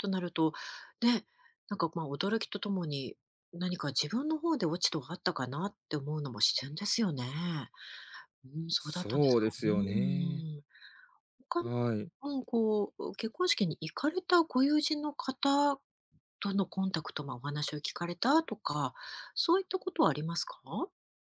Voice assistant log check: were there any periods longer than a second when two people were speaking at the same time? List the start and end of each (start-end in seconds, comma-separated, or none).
8.8-10.4